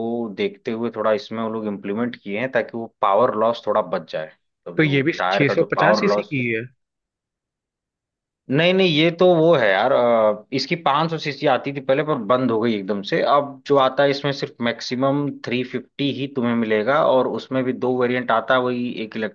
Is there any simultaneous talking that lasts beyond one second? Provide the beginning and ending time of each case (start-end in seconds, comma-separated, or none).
4.8-6.3